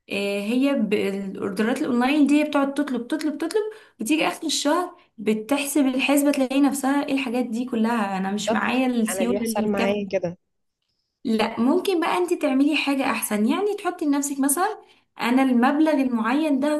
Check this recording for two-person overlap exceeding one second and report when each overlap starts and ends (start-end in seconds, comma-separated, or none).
8.5-10.0